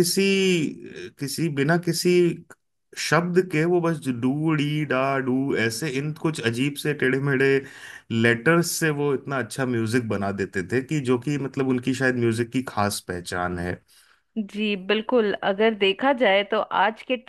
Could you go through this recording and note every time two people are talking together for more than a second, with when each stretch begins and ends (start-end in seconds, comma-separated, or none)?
none